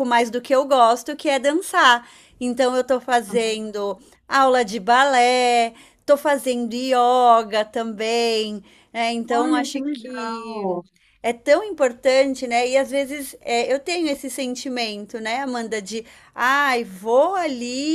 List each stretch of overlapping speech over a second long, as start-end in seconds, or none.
9.3-10.8